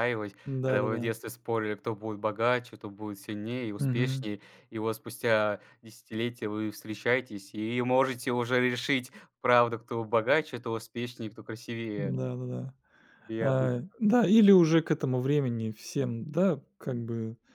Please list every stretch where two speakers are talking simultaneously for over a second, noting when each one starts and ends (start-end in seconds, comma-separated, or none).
none